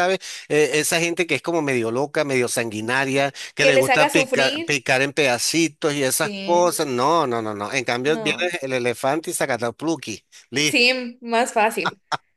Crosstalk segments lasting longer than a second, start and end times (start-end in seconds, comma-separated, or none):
3.6-4.8